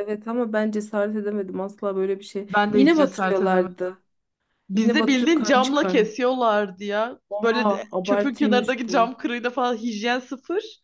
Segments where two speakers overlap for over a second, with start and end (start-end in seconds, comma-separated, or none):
2.5-3.9, 4.7-6.1, 7.3-9.2